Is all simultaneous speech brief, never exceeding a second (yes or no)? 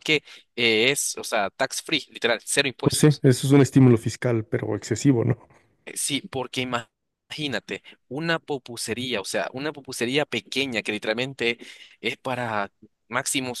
yes